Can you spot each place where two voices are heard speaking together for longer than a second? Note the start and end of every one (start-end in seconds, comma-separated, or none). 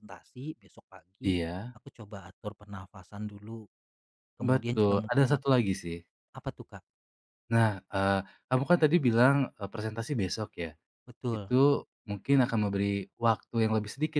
4.4-5.6